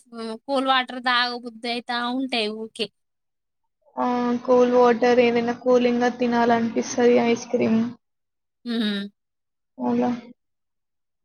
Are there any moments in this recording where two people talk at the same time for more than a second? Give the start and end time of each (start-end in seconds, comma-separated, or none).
none